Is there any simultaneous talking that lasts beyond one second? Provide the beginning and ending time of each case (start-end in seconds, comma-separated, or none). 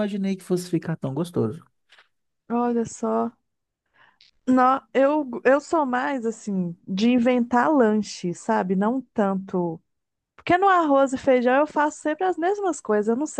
none